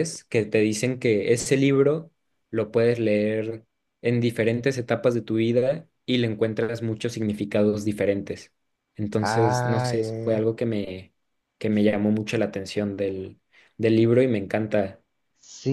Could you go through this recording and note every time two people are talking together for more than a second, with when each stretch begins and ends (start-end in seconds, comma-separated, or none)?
9.2-10.5